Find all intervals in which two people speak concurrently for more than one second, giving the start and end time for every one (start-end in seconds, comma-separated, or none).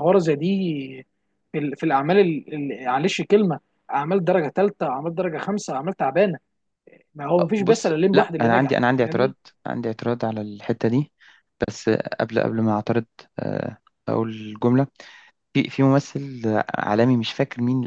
7.6-9.3